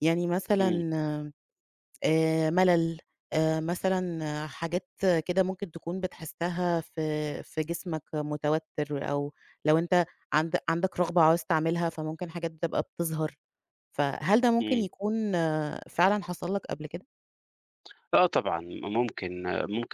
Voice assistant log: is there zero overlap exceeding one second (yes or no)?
yes